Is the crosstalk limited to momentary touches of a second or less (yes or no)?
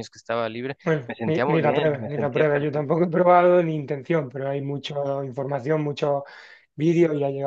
no